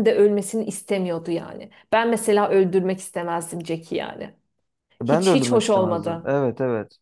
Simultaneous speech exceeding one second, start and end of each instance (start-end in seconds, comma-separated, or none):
5.0-6.3